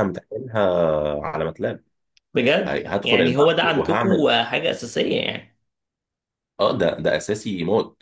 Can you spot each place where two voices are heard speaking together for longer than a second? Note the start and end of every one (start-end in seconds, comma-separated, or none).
2.6-4.3